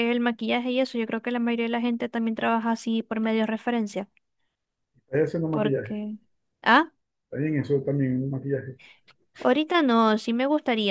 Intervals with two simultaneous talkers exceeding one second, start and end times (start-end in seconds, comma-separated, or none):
none